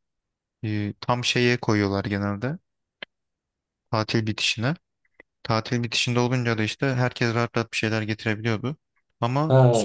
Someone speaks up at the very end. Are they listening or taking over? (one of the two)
taking over